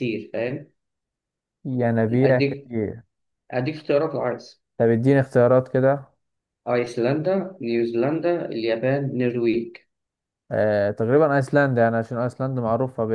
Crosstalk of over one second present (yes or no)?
no